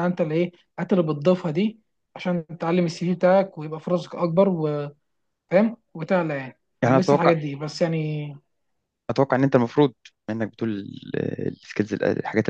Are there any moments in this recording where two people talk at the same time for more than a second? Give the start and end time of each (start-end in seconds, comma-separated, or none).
none